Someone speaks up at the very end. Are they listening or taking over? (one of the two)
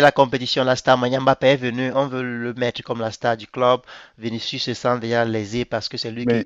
listening